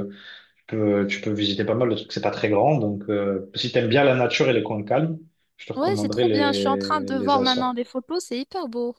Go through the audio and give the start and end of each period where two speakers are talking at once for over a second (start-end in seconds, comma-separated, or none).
5.7-7.8